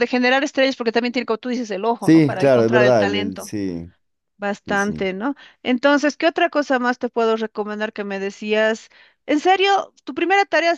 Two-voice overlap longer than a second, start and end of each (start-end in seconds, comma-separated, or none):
2.0-3.5